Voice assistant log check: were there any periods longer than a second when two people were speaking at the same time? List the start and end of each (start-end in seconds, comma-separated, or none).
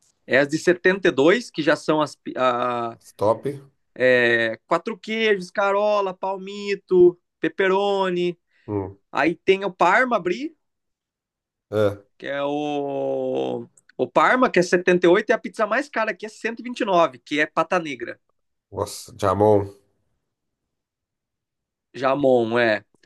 none